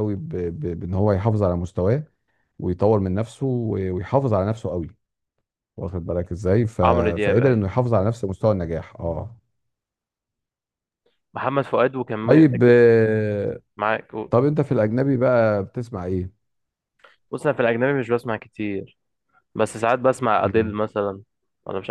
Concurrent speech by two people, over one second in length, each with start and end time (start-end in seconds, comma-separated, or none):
none